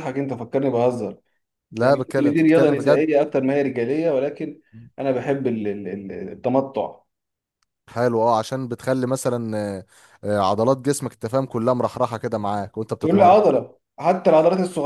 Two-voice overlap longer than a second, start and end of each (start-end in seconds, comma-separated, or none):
1.8-3.1